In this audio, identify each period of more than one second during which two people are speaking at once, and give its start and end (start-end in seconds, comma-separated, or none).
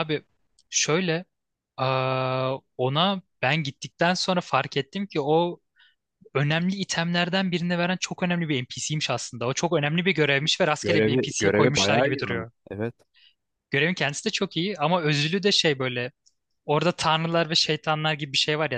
10.8-12.5